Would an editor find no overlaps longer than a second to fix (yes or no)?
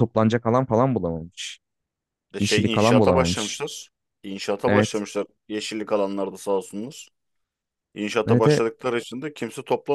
no